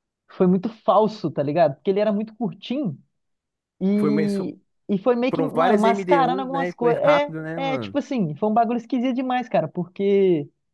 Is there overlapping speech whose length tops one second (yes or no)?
yes